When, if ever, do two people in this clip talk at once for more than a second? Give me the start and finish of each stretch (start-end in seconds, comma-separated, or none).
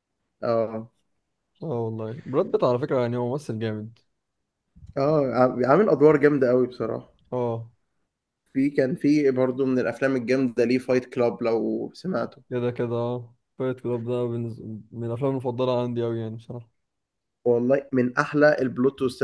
none